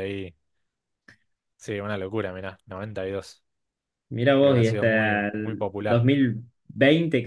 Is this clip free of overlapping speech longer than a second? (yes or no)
no